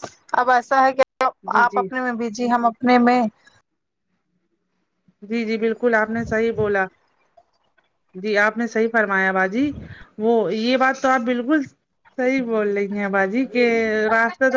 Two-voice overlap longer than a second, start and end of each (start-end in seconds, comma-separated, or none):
none